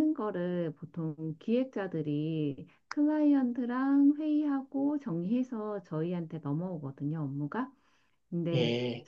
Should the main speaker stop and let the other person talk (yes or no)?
no